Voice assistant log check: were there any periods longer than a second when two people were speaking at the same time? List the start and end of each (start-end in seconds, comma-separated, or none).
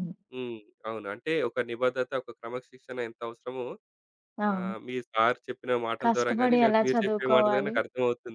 6.0-7.8